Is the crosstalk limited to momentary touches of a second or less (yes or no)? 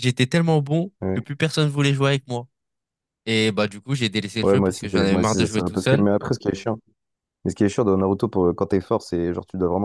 no